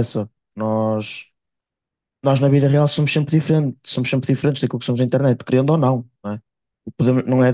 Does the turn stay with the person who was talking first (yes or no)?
yes